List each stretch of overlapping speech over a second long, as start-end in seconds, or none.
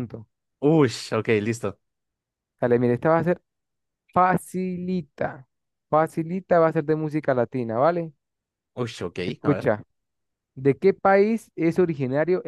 none